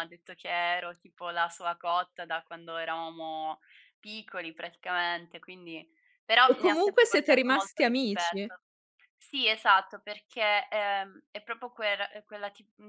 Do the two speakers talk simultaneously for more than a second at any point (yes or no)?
yes